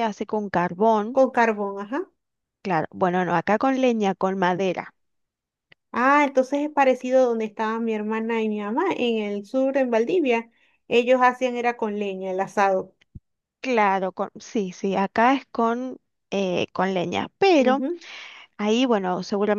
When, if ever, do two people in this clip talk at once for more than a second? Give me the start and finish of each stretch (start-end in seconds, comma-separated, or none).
none